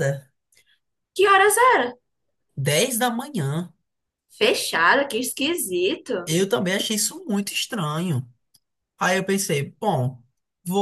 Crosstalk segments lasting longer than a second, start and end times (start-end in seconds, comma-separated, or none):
none